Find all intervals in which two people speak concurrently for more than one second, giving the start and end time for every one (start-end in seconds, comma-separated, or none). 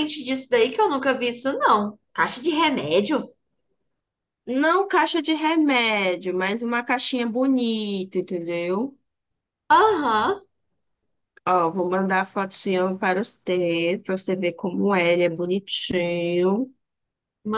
none